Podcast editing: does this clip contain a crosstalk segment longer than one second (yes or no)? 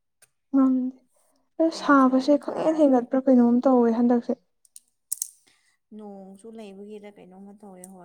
yes